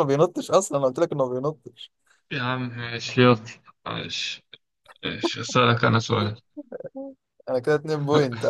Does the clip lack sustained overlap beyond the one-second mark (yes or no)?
yes